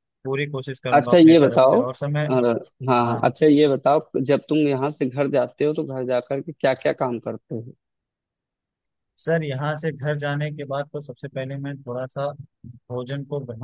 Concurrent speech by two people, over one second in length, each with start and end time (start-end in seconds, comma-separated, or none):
0.9-2.3